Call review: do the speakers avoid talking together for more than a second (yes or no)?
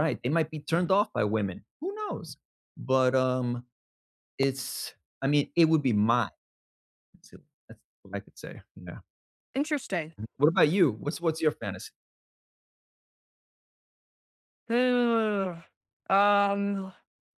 yes